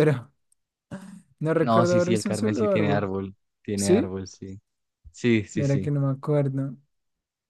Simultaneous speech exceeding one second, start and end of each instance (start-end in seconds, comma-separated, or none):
1.6-3.1